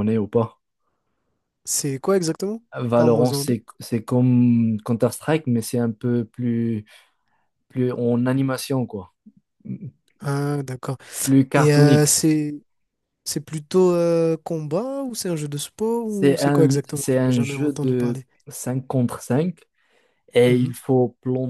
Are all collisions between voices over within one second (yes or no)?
no